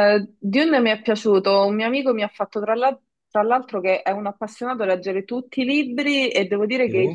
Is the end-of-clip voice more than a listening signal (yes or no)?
no